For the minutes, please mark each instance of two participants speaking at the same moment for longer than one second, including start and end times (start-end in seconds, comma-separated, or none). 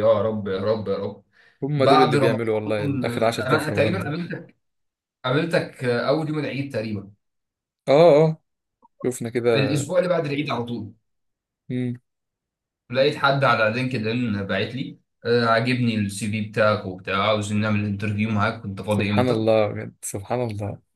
1.8-4.2